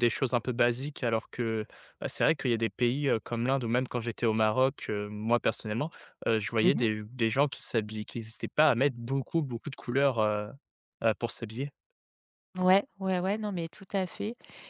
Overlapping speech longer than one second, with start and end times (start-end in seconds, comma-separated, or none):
none